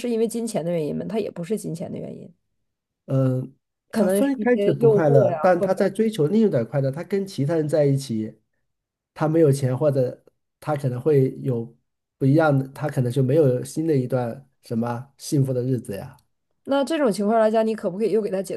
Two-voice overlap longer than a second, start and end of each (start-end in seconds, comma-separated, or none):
4.0-5.7